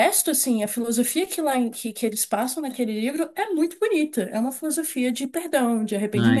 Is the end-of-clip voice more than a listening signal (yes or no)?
yes